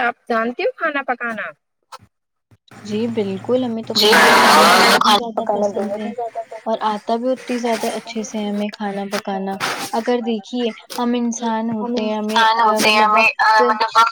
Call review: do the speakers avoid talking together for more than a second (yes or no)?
no